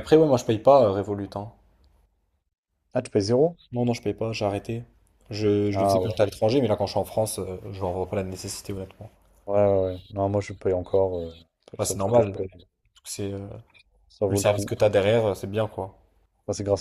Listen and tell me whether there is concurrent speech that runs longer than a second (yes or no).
no